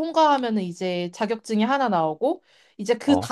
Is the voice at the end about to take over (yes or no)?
no